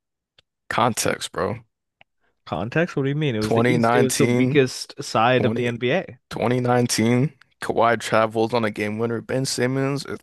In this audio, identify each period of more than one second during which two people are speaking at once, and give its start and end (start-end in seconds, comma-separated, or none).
3.4-4.6